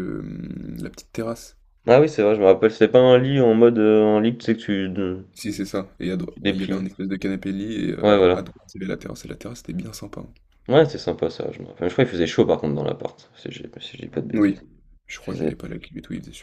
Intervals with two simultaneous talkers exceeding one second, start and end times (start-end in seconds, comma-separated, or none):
none